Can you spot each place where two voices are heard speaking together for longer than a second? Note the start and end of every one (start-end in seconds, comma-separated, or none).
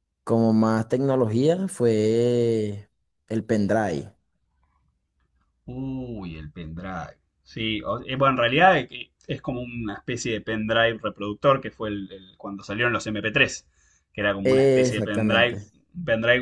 14.4-15.7